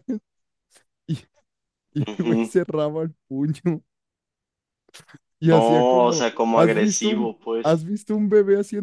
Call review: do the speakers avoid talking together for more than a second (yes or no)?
no